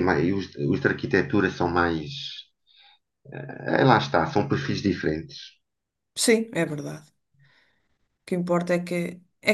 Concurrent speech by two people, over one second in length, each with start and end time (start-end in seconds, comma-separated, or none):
none